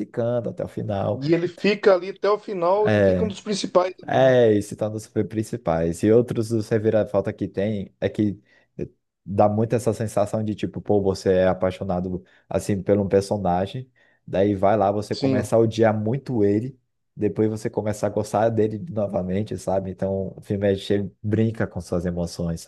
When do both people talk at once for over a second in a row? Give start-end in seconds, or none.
none